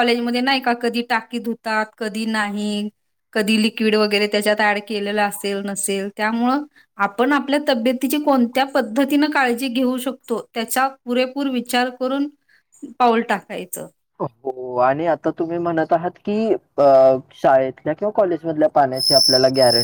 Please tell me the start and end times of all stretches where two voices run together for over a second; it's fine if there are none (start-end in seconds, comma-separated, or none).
none